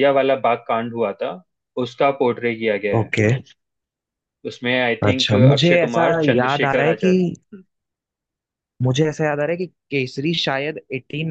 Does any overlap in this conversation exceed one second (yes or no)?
yes